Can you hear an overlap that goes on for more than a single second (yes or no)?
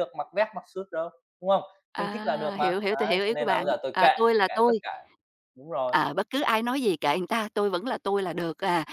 yes